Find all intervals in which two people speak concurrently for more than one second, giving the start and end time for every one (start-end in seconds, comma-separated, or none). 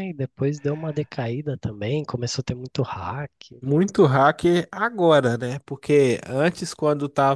none